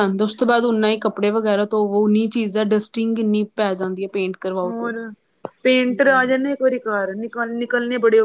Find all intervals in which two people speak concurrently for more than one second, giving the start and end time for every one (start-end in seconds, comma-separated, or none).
none